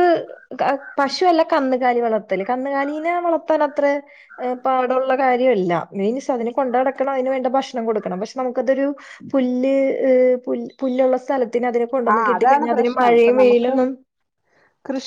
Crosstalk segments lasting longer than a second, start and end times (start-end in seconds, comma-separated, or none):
12.2-13.8